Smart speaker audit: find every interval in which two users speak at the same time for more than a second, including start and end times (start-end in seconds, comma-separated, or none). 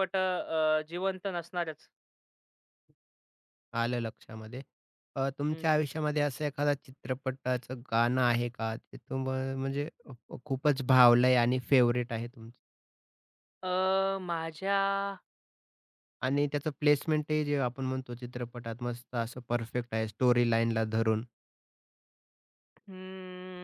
none